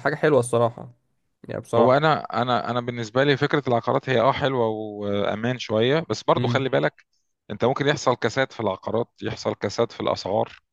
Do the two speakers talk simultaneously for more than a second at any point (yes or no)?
no